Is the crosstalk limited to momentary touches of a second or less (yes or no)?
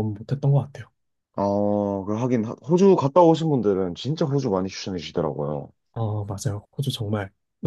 yes